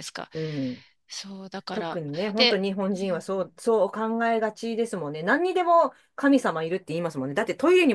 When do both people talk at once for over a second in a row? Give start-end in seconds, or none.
1.7-3.5